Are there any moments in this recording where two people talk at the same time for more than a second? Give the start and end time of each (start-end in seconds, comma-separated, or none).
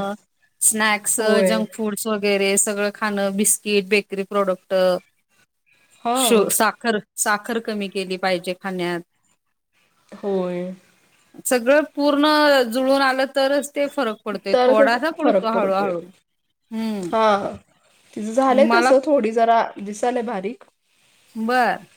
14.5-15.9